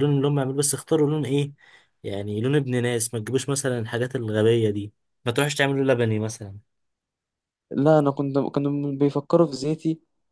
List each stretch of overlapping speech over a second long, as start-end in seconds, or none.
none